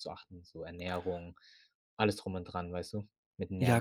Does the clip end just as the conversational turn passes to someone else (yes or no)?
yes